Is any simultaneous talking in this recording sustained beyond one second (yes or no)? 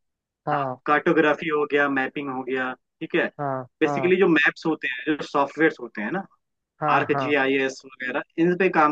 no